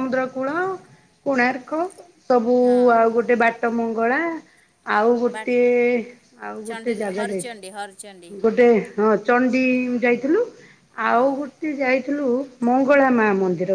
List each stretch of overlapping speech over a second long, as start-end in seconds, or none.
6.7-8.3